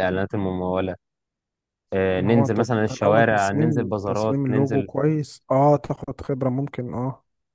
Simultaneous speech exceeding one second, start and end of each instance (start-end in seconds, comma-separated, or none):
2.2-4.9